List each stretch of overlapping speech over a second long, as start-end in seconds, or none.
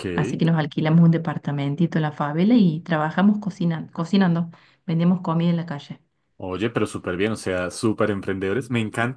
none